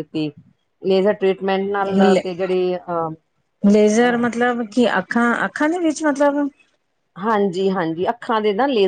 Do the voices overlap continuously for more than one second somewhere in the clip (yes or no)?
no